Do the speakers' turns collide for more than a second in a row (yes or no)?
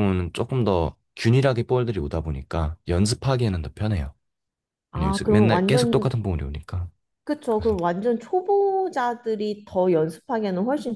yes